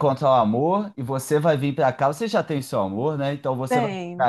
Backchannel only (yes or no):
yes